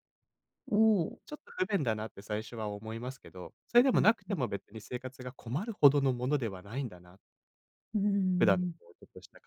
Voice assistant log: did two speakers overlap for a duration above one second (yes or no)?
no